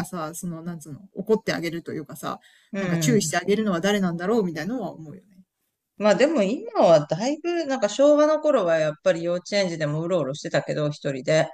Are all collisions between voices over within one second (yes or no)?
yes